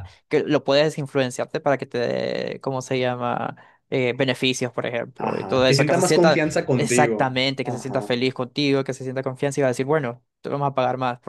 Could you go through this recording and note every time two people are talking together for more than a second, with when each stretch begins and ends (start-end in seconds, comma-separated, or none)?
5.2-8.2